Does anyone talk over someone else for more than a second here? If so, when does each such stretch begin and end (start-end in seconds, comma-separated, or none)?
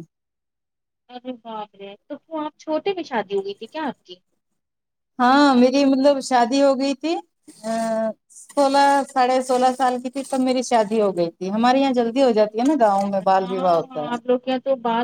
12.3-14.2